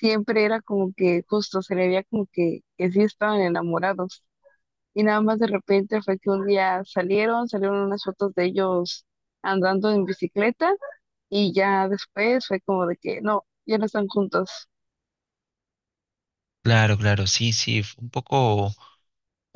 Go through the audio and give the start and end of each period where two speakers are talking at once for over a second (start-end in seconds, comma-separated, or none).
none